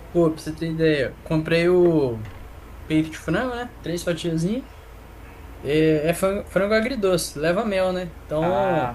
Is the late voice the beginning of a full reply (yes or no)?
no